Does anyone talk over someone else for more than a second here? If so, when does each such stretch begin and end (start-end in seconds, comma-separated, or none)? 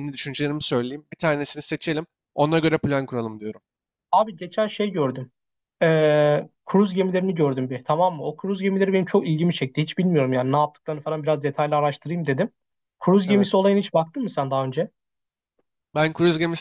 none